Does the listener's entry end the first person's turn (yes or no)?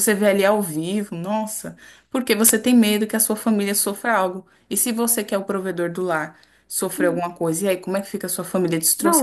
yes